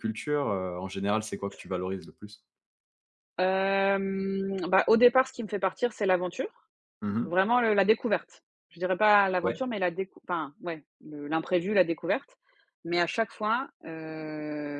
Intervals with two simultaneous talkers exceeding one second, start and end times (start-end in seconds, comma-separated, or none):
none